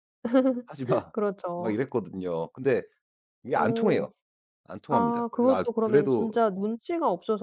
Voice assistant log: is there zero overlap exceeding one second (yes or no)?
no